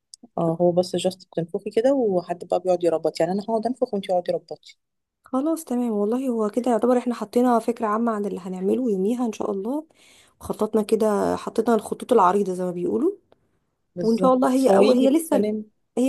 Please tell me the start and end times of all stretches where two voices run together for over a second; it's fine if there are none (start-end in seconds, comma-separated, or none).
14.0-15.5